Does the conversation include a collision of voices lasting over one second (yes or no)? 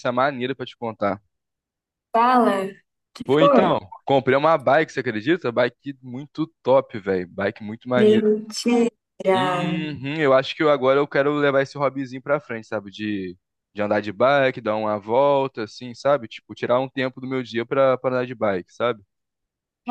no